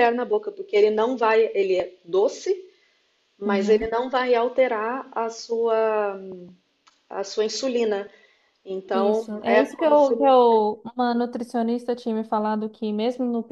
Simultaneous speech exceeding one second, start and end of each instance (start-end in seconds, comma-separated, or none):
8.9-10.1